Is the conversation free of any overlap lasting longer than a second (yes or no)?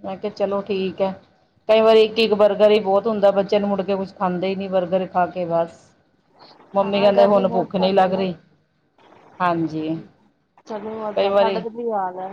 no